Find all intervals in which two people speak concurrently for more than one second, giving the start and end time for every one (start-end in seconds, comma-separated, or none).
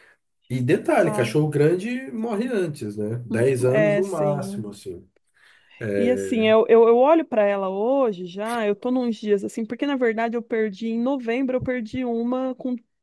3.3-4.7